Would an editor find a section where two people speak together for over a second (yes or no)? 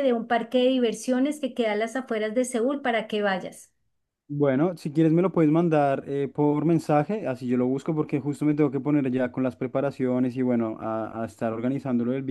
no